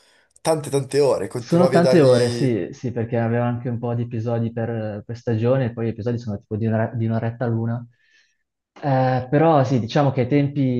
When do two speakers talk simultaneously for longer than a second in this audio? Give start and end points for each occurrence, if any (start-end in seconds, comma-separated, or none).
1.4-2.6